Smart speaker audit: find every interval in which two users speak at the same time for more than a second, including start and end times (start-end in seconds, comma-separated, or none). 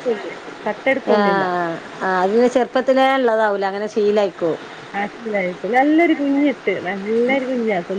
none